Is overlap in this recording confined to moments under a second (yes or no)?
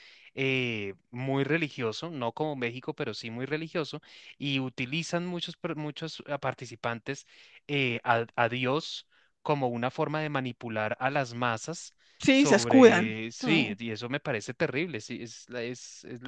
no